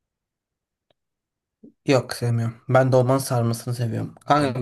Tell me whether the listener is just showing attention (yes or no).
yes